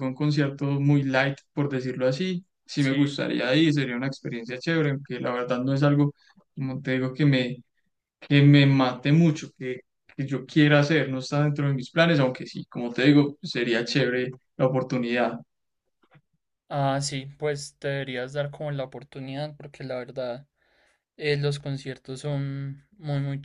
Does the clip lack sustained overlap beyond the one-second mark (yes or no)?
yes